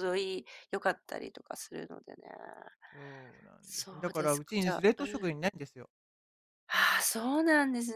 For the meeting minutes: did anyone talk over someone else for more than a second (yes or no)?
yes